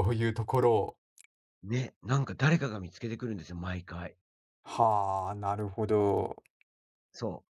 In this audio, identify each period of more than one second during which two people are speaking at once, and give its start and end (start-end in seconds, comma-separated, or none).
none